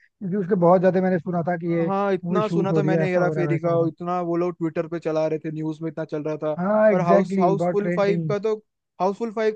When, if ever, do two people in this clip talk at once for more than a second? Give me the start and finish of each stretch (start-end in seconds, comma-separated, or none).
1.9-3.9, 6.9-8.3